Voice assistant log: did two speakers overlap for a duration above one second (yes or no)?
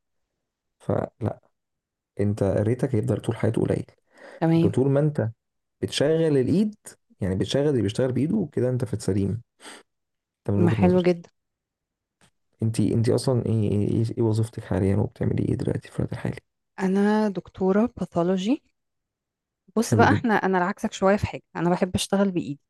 no